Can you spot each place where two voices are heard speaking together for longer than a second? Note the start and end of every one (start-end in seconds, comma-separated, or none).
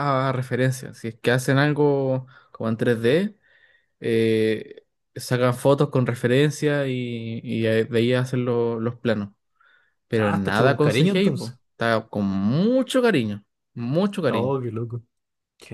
10.2-11.6